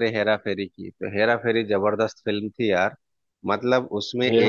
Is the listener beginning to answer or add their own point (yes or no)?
no